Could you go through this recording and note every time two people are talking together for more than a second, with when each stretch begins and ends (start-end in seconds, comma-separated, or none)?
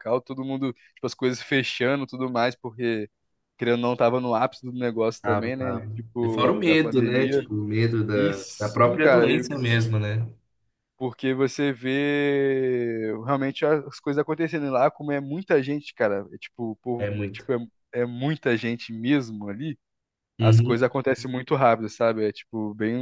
5.2-7.5, 8.1-9.5